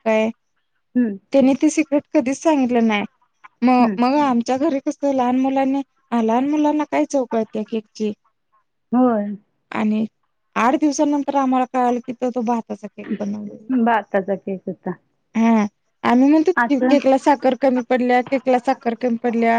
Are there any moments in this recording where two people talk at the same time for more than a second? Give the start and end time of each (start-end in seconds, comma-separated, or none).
none